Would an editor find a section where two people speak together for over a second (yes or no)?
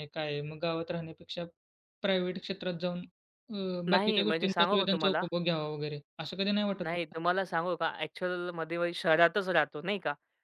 yes